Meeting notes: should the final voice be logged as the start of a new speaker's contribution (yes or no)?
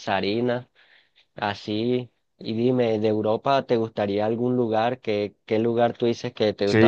yes